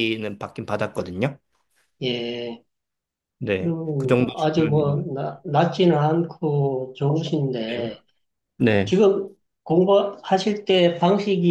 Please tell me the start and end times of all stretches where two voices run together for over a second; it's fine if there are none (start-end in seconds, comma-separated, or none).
3.6-5.0